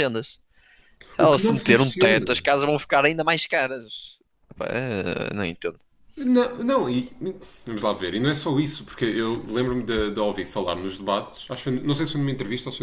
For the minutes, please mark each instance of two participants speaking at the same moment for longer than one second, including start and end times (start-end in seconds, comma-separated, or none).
1.2-2.5